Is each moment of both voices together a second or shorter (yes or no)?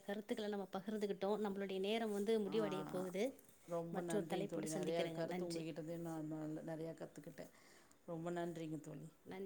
no